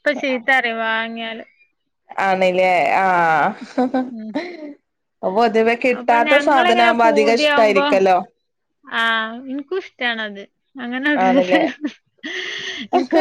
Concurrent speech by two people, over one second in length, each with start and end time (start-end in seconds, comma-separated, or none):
6.0-7.8